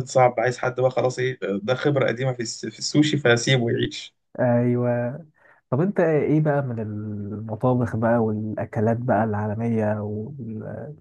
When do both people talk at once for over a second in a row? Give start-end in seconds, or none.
none